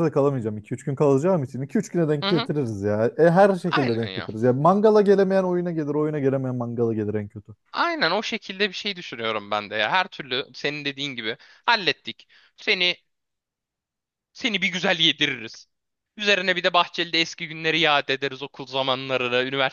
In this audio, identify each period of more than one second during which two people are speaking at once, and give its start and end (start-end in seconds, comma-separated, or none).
none